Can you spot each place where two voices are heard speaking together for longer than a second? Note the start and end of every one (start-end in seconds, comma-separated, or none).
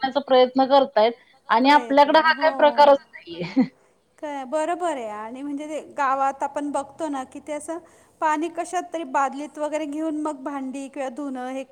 none